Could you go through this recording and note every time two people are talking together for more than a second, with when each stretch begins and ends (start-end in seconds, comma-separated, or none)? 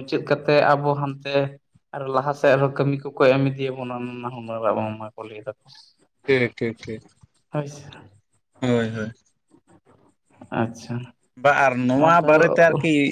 none